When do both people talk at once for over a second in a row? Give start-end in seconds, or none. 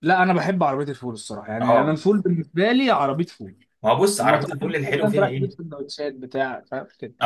4.2-5.5